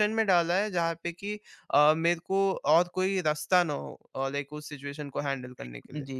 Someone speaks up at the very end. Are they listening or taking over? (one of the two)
taking over